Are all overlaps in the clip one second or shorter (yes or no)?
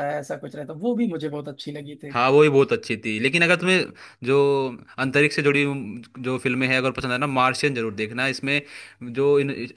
yes